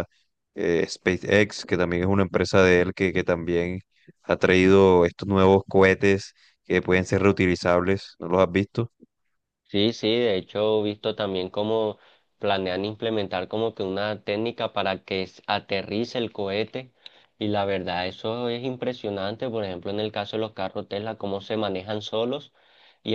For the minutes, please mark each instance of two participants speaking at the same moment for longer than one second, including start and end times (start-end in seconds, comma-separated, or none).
none